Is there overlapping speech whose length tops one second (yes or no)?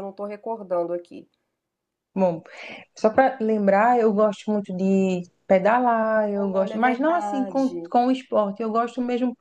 yes